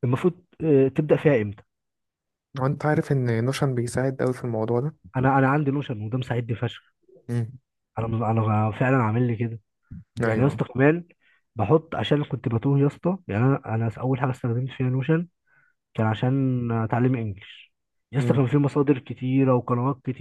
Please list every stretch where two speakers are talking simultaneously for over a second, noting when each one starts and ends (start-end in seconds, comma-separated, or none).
none